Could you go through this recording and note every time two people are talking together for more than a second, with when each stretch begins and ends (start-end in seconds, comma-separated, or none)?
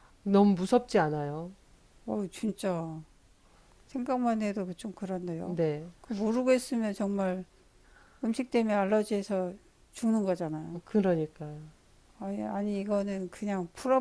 none